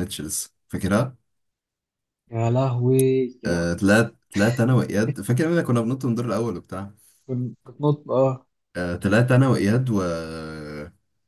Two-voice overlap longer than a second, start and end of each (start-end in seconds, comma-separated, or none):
none